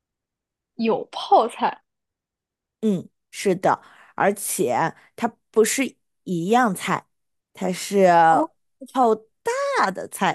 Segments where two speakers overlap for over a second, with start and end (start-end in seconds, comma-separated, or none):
none